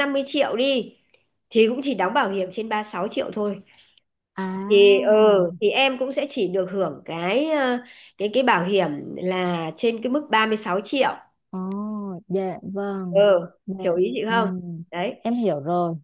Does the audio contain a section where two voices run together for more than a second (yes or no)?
no